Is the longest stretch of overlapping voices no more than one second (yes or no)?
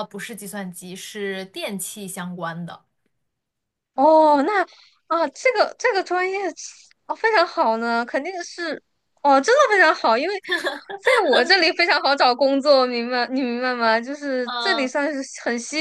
yes